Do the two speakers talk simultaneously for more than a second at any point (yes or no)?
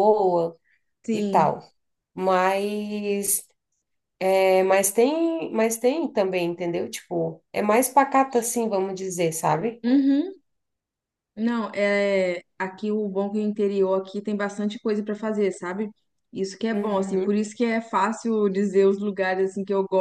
no